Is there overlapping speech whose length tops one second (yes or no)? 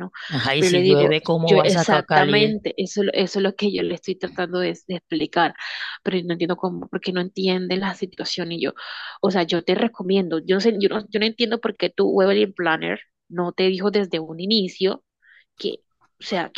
yes